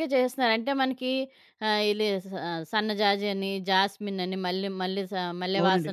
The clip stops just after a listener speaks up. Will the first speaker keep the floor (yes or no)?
yes